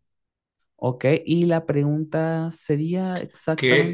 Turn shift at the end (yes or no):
yes